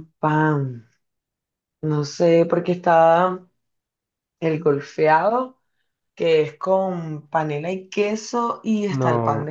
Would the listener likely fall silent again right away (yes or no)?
no